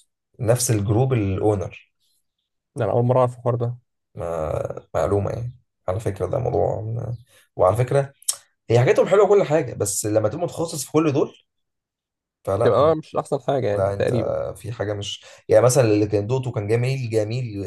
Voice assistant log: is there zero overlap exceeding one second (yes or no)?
yes